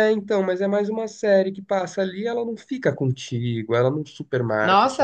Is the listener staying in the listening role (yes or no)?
no